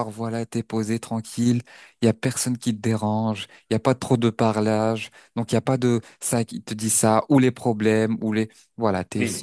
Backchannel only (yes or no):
yes